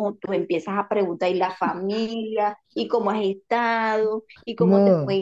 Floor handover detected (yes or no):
no